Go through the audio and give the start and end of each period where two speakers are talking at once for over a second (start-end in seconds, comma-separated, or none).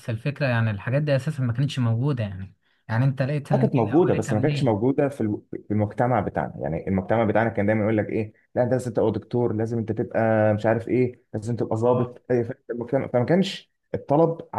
3.5-4.8